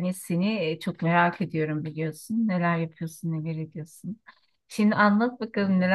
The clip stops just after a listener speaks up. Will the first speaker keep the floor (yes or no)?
yes